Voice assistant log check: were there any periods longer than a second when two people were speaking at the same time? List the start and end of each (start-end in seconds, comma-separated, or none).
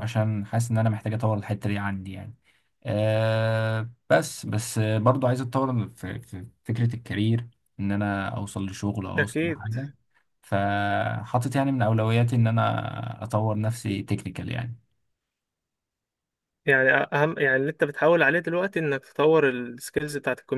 none